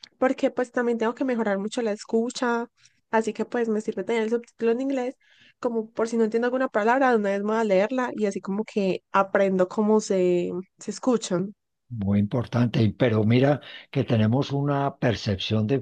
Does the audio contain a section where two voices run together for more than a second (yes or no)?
no